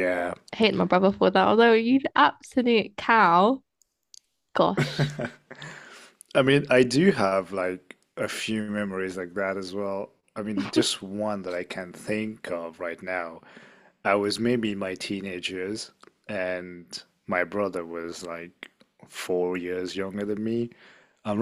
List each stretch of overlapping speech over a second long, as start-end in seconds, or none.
none